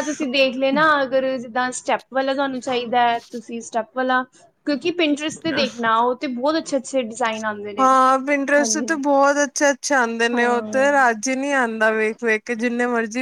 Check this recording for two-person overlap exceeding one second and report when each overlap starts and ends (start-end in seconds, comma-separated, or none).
none